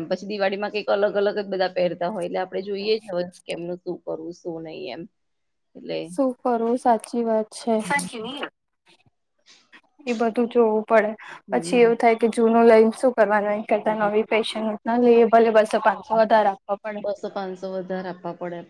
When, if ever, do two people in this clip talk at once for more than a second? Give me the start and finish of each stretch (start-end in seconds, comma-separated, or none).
none